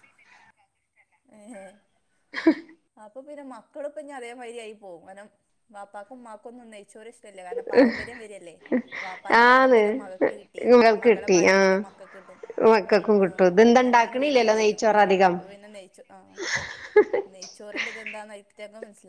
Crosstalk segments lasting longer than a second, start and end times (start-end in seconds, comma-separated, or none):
13.2-15.4